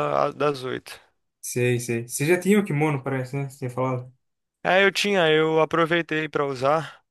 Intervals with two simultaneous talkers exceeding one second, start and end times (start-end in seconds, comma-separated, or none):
none